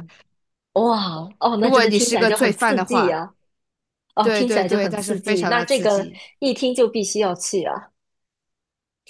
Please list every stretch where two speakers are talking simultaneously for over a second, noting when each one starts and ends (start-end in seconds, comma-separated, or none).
1.6-3.2, 4.2-6.2